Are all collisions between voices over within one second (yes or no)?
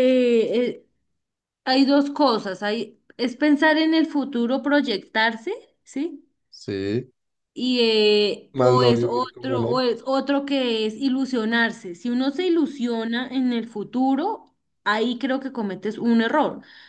no